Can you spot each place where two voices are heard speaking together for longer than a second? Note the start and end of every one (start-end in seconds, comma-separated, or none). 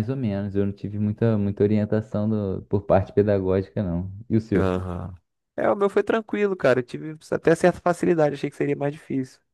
none